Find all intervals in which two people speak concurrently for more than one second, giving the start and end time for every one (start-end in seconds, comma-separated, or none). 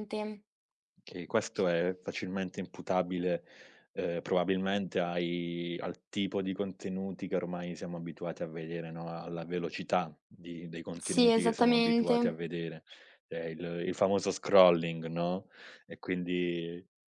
11.0-12.4